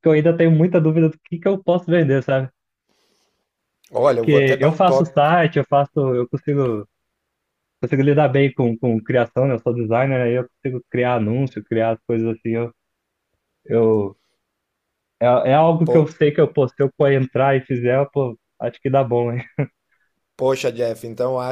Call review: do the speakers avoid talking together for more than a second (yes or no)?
no